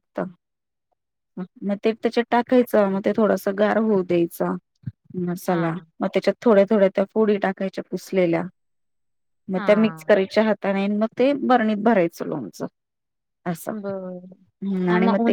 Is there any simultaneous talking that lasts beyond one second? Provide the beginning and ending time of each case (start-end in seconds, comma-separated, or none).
none